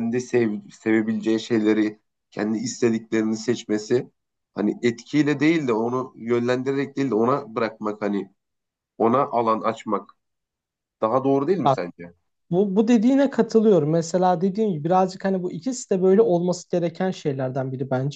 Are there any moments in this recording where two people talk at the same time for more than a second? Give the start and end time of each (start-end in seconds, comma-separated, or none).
none